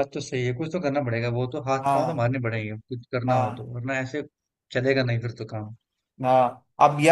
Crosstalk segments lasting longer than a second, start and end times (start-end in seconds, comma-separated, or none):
none